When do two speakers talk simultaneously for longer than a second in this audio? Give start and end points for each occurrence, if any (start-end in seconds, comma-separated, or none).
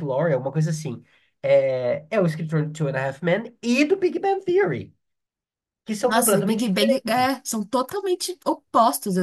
6.1-7.4